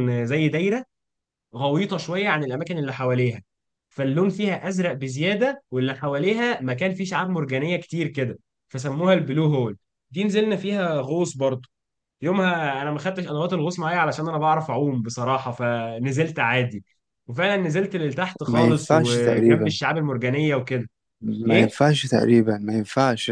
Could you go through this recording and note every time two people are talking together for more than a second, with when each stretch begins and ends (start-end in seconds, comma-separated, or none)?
18.5-19.8